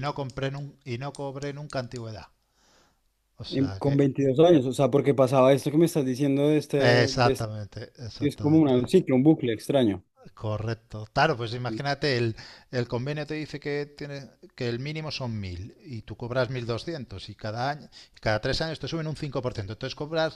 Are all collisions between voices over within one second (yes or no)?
yes